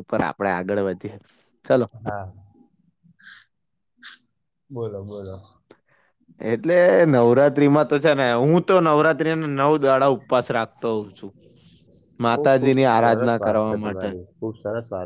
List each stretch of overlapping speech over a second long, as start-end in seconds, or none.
12.4-14.1